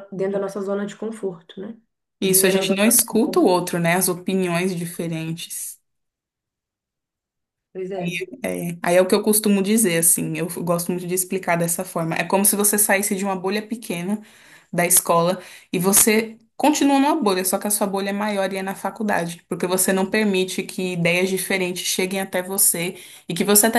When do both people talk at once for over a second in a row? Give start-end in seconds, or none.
2.2-3.5